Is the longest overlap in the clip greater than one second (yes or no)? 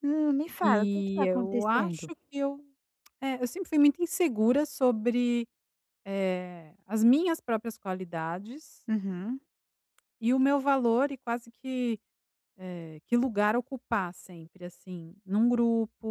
yes